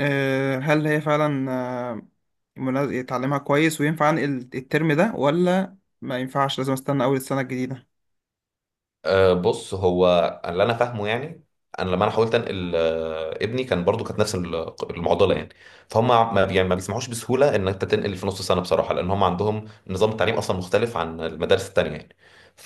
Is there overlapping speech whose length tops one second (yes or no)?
no